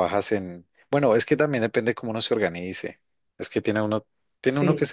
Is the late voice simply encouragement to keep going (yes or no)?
yes